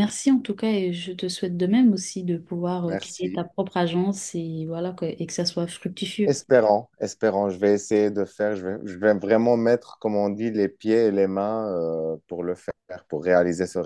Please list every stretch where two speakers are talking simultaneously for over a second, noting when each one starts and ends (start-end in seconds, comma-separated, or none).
none